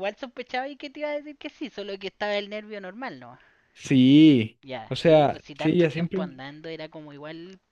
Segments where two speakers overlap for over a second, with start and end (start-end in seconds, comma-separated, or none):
4.6-6.2